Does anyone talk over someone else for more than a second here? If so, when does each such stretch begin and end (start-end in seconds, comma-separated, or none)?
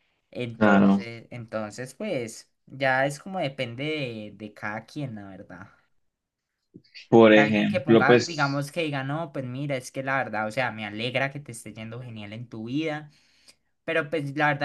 7.3-8.7